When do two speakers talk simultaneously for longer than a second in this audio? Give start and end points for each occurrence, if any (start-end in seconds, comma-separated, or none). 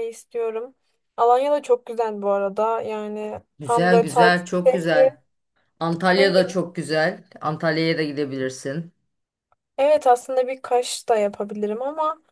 3.6-5.1